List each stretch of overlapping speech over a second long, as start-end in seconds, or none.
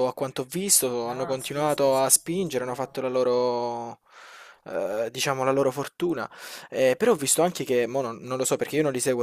1.0-3.0